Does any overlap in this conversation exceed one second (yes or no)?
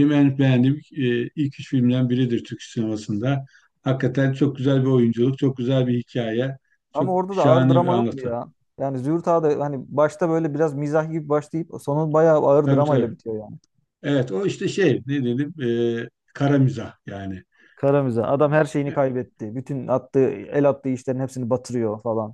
yes